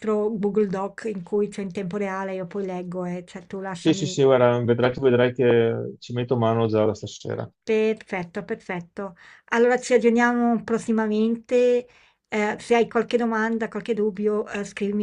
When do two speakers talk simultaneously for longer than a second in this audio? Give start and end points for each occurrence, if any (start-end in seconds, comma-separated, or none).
none